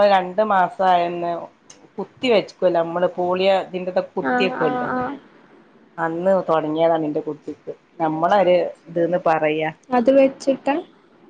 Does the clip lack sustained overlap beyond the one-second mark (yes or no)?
yes